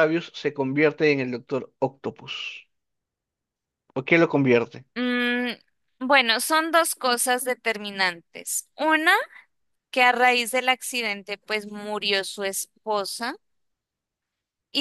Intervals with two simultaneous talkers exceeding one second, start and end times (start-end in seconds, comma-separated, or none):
none